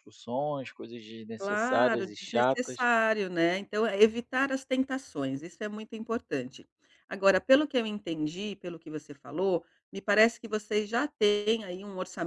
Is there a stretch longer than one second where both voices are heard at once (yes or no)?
yes